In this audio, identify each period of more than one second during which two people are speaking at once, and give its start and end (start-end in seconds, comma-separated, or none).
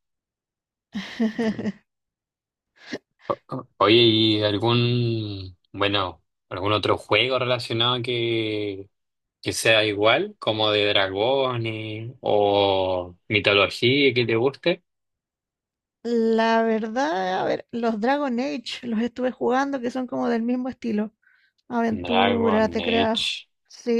21.9-23.2